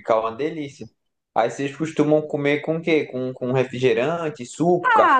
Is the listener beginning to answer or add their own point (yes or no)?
yes